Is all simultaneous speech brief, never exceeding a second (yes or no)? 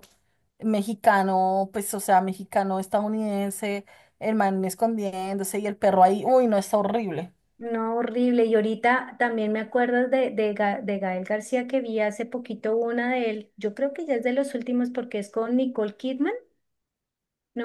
yes